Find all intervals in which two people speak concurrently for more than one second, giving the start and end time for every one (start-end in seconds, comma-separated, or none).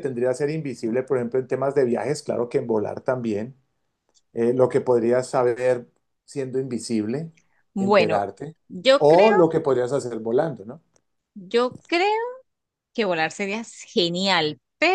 none